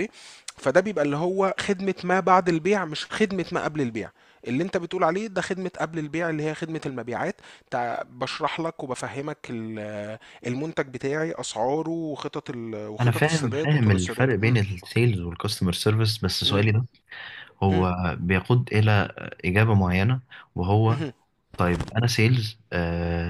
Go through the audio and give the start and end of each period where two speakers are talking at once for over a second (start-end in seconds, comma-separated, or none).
13.0-14.3